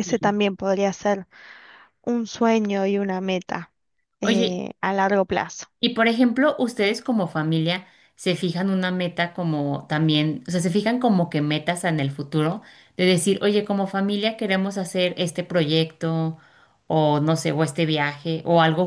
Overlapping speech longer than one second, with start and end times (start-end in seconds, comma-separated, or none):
none